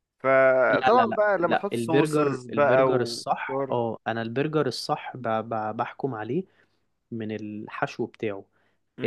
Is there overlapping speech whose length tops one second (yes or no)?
yes